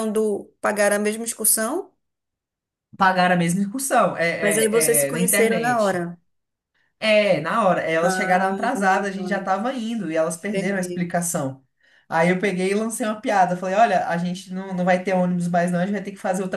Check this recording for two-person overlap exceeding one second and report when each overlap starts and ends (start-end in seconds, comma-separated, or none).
4.7-6.1